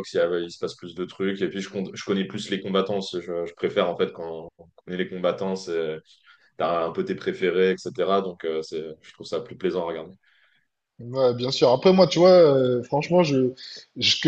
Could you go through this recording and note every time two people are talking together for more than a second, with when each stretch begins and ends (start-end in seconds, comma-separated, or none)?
none